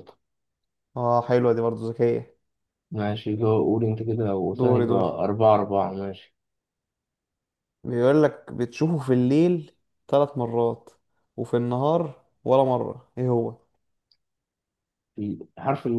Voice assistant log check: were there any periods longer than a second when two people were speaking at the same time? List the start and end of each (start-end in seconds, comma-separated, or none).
none